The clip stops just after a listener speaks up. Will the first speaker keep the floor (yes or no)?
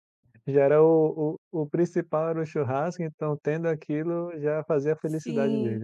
no